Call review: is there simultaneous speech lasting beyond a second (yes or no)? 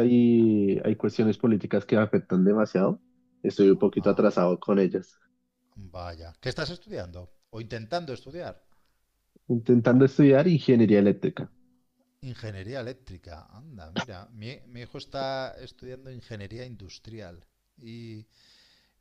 no